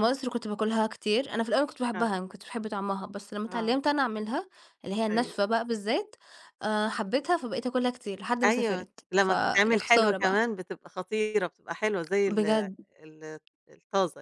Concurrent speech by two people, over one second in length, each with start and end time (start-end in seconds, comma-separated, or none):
8.4-10.4